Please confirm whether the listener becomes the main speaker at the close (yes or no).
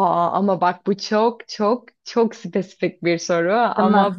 no